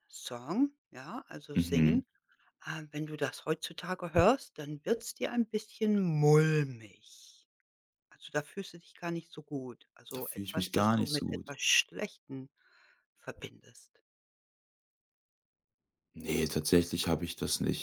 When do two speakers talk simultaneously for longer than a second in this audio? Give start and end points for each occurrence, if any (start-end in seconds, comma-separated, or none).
10.1-11.6